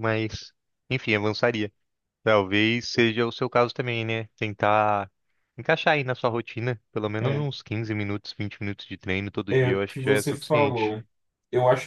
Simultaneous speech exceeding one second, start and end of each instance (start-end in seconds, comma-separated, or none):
9.5-10.9